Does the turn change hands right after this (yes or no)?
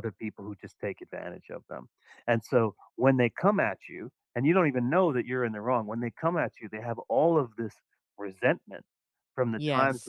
no